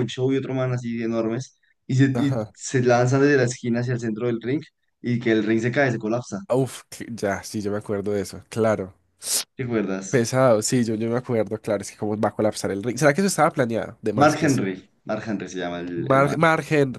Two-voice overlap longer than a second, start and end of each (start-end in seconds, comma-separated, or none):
none